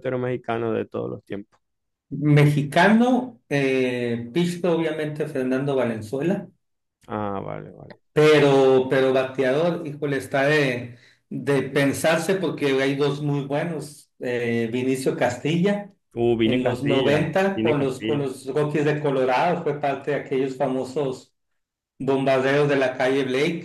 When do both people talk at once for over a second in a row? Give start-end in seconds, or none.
16.4-18.3